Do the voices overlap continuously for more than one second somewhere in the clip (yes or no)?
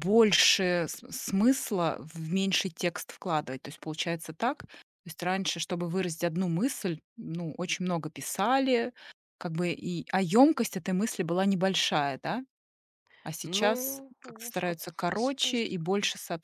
yes